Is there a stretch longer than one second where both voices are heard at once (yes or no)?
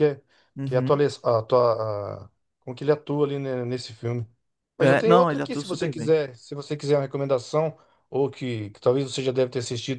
yes